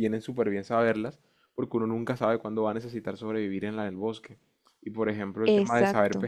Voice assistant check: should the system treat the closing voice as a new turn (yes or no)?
no